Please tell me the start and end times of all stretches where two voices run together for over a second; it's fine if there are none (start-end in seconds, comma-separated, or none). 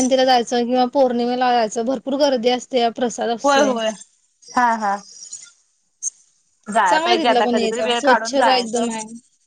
6.9-8.8